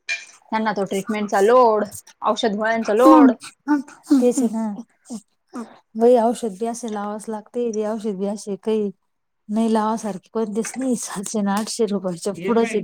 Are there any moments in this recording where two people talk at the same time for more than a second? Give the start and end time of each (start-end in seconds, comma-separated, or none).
none